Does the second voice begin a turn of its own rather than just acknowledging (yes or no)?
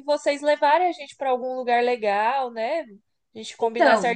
no